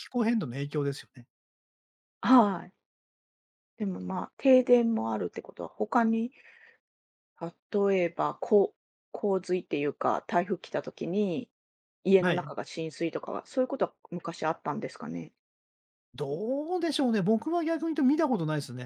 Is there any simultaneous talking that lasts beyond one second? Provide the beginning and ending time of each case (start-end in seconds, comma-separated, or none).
none